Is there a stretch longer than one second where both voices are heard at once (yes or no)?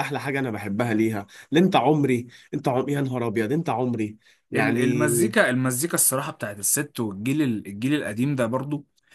no